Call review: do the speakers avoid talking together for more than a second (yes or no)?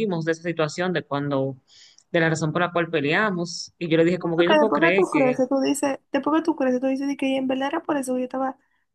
no